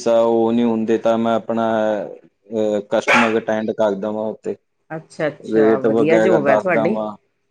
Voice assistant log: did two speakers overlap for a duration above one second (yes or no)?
yes